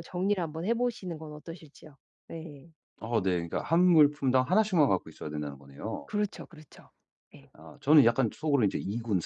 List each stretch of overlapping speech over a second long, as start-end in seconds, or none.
none